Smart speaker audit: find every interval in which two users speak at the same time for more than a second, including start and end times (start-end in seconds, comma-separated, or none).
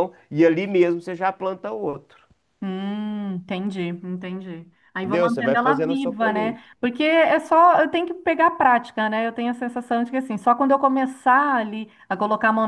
5.0-6.7